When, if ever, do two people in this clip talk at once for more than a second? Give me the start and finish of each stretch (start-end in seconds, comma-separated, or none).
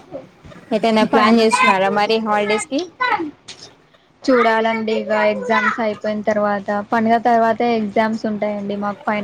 none